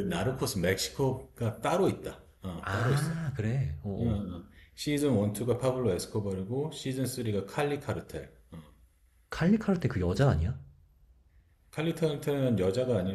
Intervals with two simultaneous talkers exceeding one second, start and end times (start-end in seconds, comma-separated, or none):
none